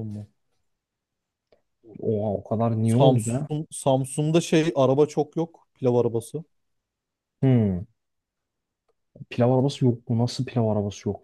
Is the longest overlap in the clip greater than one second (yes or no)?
no